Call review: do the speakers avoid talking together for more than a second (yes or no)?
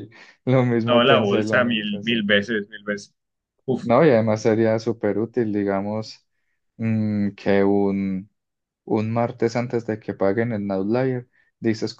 no